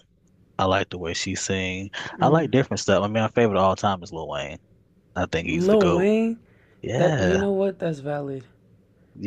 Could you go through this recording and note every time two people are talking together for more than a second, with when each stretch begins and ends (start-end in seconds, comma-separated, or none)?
none